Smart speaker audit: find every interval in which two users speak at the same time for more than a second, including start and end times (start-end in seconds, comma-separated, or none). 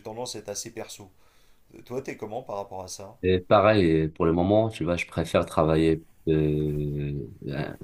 none